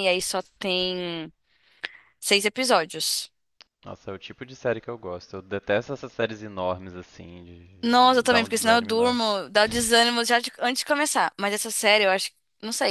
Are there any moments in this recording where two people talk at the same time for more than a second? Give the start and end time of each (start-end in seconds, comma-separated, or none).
7.8-9.2